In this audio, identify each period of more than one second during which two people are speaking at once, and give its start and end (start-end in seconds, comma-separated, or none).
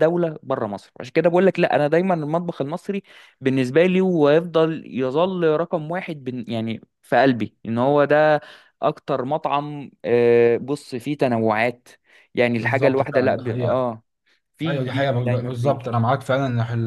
12.6-13.9, 14.7-16.0